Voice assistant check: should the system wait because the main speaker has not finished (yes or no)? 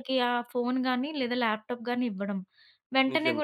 yes